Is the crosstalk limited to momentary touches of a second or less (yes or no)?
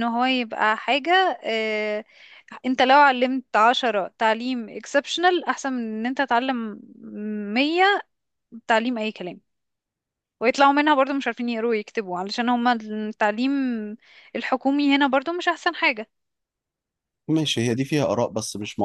yes